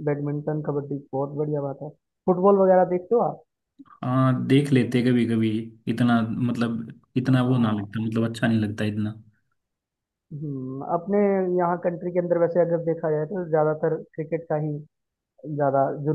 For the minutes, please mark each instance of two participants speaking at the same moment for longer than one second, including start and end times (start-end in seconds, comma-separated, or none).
none